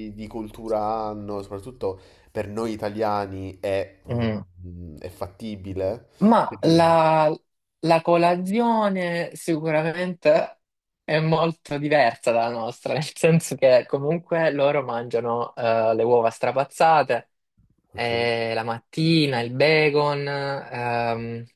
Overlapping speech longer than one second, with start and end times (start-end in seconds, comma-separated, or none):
none